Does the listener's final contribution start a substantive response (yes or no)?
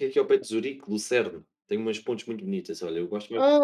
yes